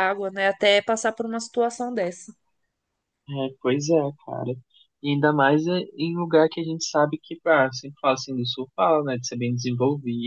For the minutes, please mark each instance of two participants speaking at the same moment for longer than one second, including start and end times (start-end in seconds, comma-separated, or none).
none